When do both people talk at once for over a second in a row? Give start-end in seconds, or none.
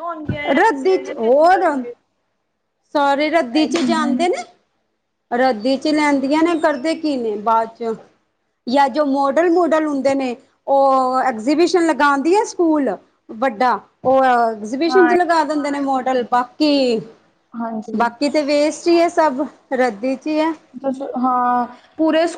0.6-1.8